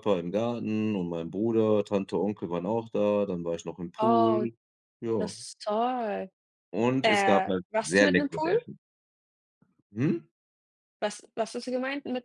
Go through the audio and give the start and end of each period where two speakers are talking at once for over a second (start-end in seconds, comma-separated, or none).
7.0-8.6